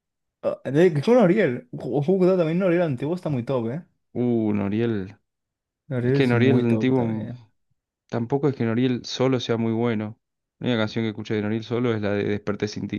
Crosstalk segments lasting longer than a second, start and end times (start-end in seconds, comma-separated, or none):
6.0-7.3